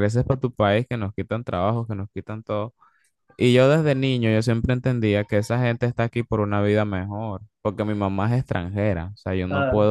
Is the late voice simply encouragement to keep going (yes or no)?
yes